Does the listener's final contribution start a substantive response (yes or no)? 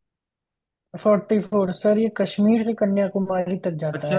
yes